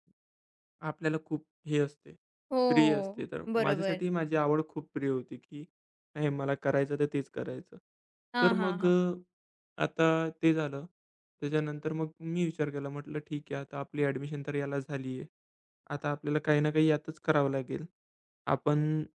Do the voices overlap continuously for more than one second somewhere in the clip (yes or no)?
yes